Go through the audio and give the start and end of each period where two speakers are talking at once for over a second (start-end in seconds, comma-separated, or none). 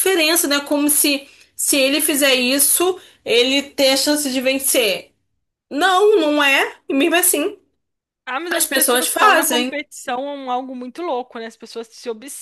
8.5-9.7